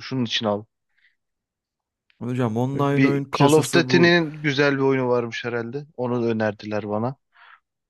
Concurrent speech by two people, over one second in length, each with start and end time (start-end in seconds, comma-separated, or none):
2.8-4.2